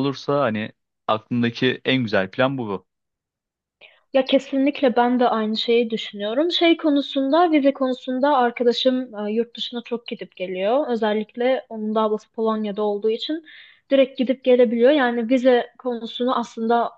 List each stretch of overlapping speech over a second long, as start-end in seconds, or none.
none